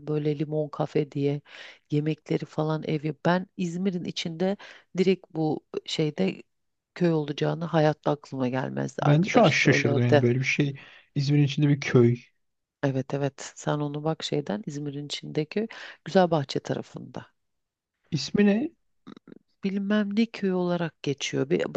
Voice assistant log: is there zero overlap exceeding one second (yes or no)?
no